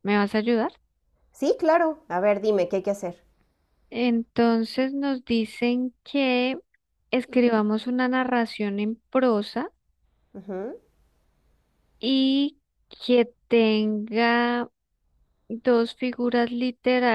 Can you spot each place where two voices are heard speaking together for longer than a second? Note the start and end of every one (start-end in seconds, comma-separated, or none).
none